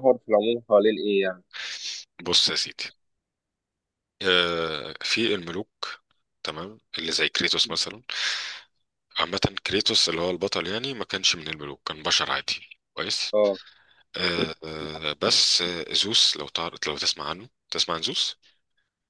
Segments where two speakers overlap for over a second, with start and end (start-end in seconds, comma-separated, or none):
none